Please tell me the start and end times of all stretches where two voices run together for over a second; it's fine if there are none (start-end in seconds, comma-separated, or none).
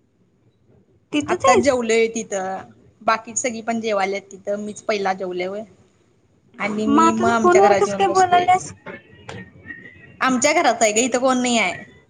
6.8-8.5